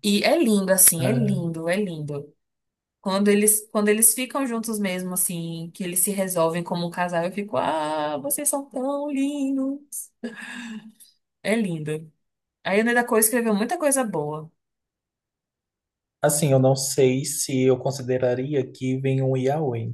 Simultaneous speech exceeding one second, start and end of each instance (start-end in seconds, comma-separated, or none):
none